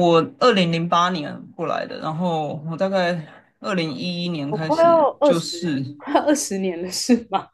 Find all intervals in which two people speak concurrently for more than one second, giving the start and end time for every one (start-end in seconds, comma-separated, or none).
4.5-5.8